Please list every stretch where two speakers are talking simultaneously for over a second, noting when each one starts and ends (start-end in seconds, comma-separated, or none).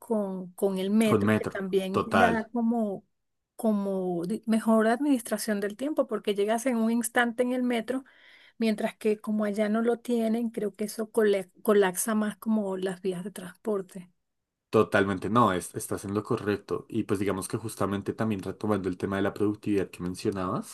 1.1-2.5